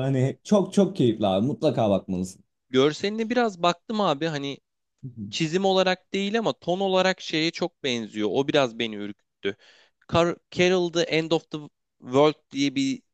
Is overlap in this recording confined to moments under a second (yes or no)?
yes